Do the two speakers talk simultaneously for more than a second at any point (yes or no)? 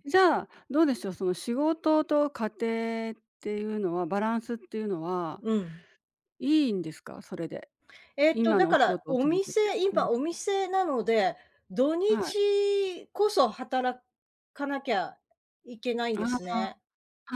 yes